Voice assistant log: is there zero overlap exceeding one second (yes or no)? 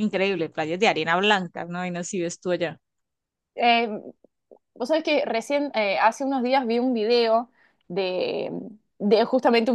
yes